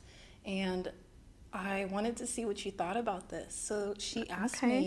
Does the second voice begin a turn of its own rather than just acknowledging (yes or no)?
no